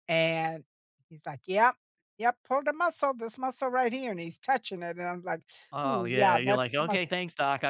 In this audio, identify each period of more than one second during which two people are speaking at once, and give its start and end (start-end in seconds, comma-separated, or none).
5.8-7.1